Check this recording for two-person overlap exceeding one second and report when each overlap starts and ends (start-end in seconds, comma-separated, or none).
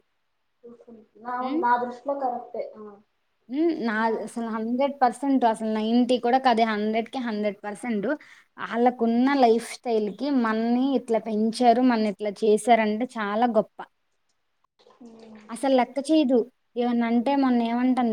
none